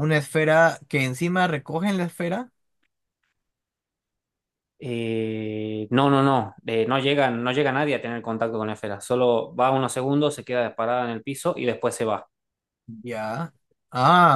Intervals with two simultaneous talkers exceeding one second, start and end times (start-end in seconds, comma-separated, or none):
none